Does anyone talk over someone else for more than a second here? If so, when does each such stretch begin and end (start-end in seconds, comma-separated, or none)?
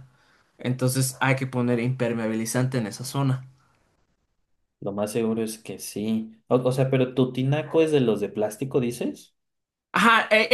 none